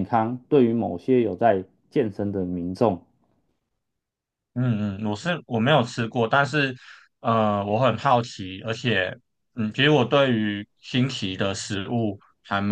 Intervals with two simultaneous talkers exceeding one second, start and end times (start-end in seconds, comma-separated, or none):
none